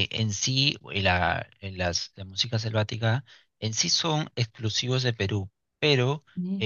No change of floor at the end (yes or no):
yes